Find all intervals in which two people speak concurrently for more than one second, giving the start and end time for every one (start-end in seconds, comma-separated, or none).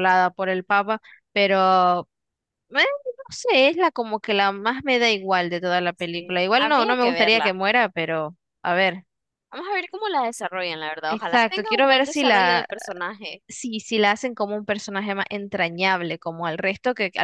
6.0-7.5, 11.0-12.7